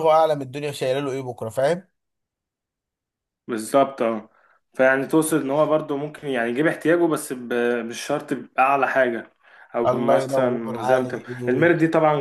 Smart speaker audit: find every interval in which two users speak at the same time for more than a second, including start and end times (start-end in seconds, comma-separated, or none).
9.9-11.3